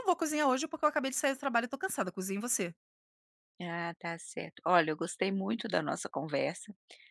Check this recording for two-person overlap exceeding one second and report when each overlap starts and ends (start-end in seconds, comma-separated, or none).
none